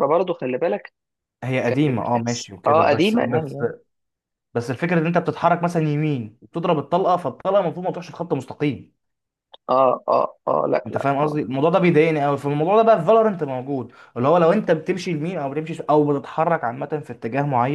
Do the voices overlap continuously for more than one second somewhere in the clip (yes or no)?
yes